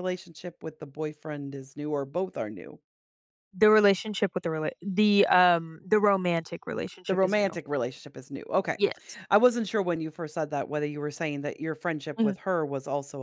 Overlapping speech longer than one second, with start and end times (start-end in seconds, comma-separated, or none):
none